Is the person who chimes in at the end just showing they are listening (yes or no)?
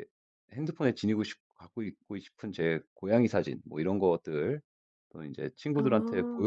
yes